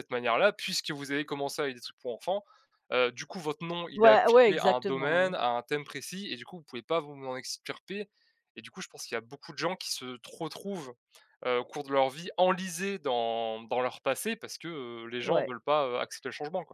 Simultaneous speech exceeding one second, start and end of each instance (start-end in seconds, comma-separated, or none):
4.0-5.3